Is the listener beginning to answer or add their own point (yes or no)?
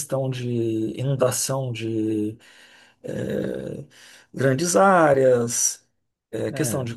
no